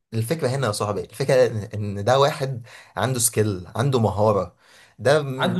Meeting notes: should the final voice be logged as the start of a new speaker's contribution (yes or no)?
yes